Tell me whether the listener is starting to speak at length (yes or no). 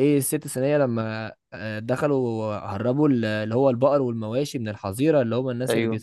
no